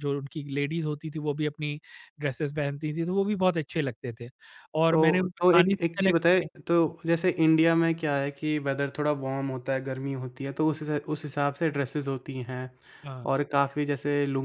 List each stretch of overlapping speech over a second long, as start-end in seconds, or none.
4.9-6.5